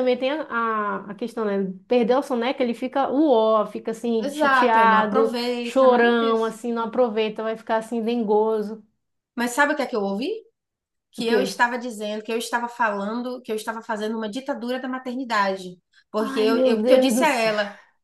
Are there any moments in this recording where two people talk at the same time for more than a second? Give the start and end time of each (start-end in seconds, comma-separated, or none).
4.2-6.5, 16.2-17.5